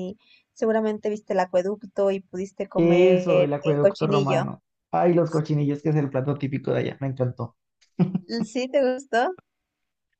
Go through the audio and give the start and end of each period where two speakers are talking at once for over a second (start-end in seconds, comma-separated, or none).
2.8-4.5